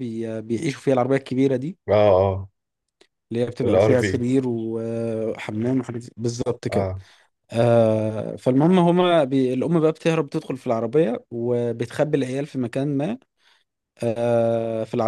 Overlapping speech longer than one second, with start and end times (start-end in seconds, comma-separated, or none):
none